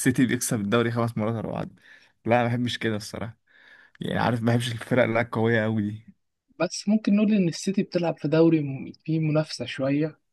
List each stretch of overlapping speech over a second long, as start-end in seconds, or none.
none